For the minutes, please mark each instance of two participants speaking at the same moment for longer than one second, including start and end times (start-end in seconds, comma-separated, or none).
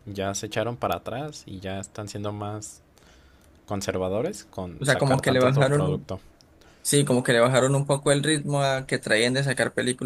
4.8-6.1